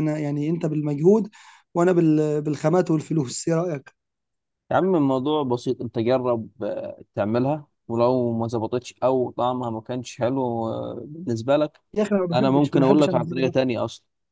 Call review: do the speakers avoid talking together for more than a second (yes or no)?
no